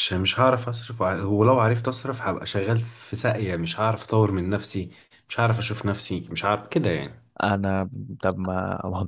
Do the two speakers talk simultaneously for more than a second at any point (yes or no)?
no